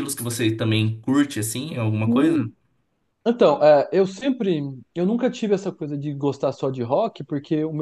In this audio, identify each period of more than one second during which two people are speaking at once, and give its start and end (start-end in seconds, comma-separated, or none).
none